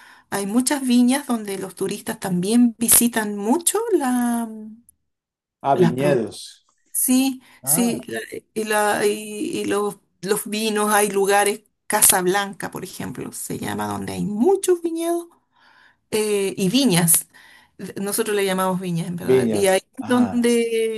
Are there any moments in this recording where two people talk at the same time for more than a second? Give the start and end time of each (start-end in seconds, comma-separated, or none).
19.2-20.5